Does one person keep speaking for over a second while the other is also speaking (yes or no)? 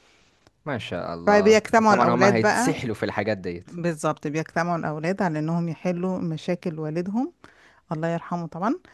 yes